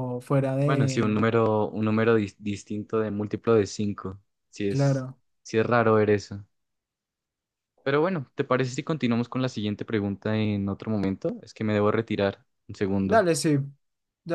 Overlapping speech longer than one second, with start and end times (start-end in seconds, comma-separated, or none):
none